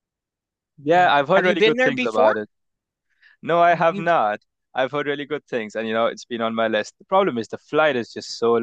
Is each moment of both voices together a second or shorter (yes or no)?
no